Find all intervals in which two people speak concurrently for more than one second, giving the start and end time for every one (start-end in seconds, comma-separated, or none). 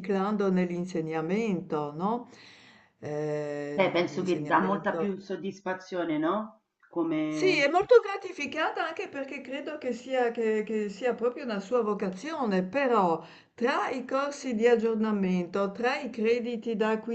3.7-5.2